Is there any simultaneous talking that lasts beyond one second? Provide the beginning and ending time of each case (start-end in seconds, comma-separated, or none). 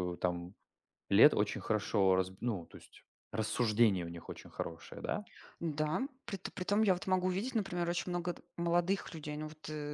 none